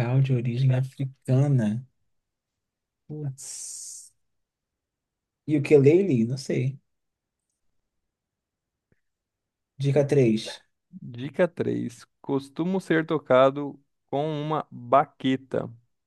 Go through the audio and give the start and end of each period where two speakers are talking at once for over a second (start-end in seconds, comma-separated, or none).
none